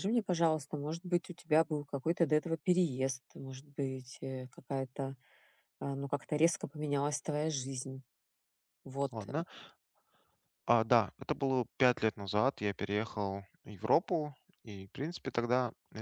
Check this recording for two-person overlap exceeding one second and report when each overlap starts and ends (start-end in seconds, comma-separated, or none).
none